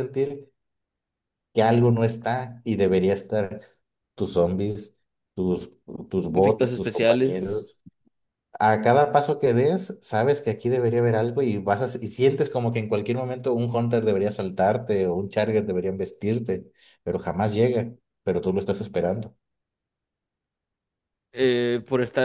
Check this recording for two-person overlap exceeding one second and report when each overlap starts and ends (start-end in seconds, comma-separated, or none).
6.3-7.7